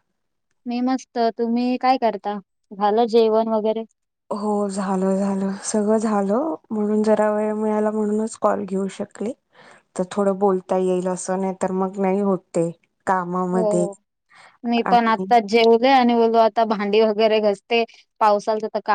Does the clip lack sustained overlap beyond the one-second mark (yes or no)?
yes